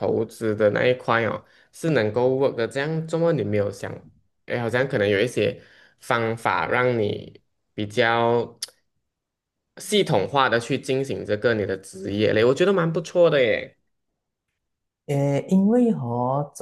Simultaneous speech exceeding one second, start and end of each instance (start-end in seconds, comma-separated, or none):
none